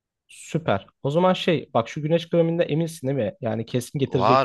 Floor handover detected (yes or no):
yes